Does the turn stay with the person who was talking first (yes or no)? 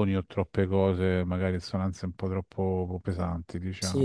no